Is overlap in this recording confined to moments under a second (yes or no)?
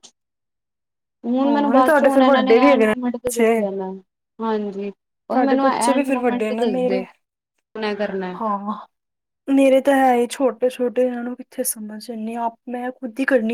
no